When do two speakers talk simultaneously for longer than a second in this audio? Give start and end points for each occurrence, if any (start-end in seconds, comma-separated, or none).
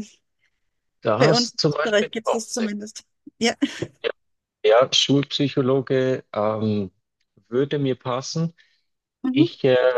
1.2-2.7